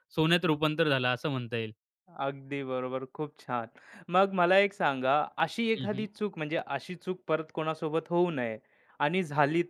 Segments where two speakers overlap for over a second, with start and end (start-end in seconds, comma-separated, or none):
none